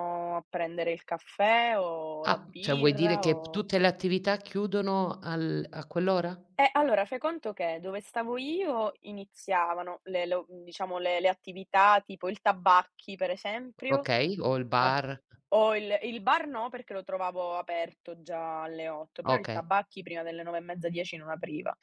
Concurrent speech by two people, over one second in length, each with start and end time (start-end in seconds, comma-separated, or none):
2.2-3.6